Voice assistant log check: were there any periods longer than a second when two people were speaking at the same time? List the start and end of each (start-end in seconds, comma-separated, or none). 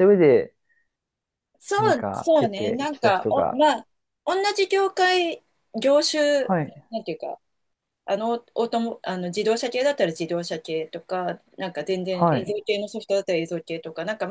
1.8-3.6